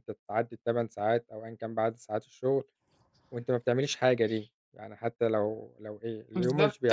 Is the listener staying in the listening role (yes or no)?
no